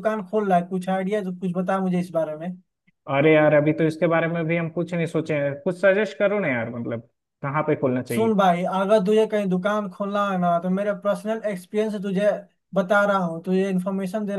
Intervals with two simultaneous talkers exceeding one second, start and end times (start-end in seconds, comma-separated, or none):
none